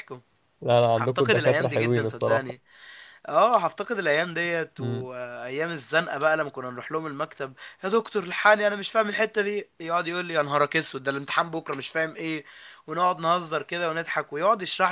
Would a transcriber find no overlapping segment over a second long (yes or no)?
no